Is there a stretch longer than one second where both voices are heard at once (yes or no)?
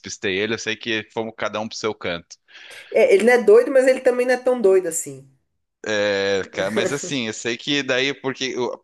no